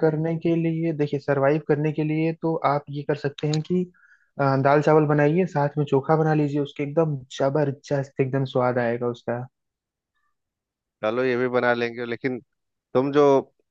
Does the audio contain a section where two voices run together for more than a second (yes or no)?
no